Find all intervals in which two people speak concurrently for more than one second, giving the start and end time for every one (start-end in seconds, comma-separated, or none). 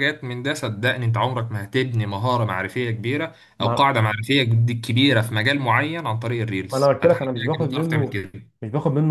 6.7-8.2